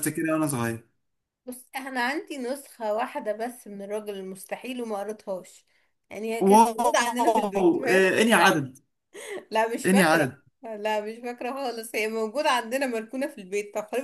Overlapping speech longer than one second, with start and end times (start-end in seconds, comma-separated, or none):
6.4-8.0